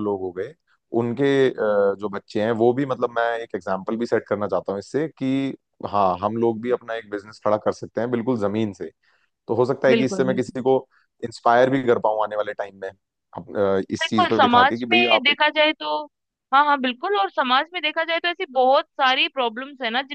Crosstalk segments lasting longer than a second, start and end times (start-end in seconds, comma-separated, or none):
14.0-15.4